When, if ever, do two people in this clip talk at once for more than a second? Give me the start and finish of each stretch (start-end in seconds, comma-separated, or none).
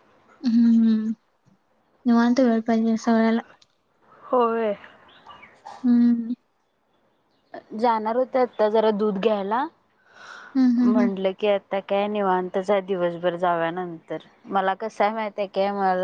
none